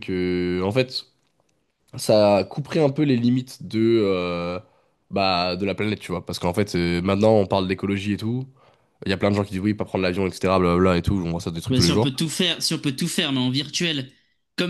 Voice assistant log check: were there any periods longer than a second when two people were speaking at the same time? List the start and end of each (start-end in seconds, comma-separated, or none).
none